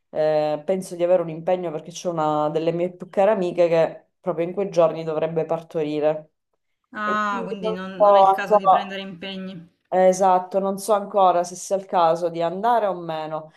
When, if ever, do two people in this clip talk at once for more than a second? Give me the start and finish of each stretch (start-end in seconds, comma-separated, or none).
7.0-9.0